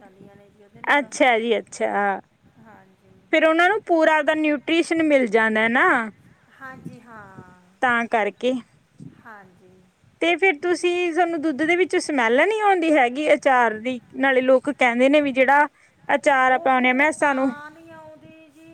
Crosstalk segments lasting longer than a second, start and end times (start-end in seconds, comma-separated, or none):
none